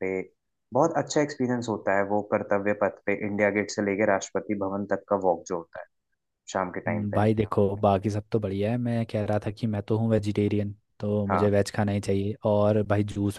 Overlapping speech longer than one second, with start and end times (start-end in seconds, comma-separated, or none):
none